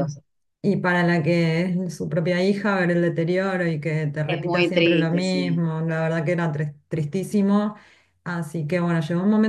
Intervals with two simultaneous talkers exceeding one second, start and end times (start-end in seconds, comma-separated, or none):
4.3-5.7